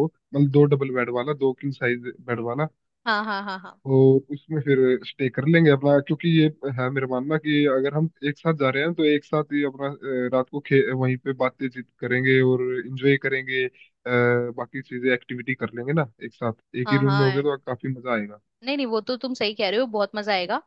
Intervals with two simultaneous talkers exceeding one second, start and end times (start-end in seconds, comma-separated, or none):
none